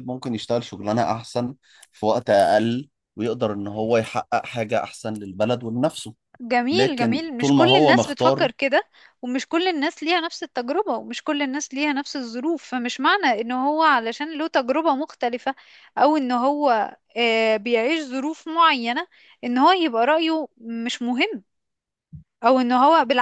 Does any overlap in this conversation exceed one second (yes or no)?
yes